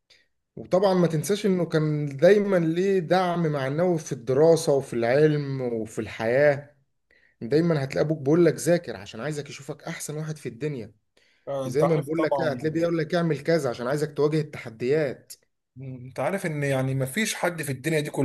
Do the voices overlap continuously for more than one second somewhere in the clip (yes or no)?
yes